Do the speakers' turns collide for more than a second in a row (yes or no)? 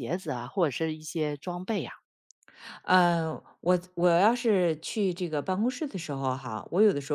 no